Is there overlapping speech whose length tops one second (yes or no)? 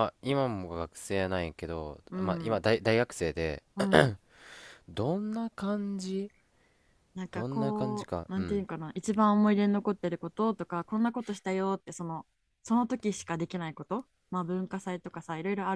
yes